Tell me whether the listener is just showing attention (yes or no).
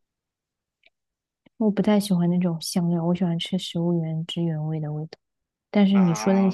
yes